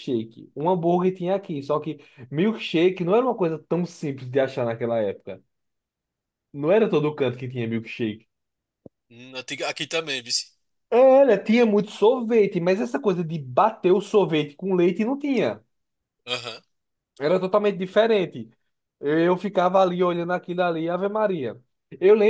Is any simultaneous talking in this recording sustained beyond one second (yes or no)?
no